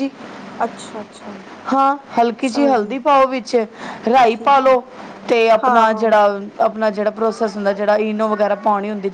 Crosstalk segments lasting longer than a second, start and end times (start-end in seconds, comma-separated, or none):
none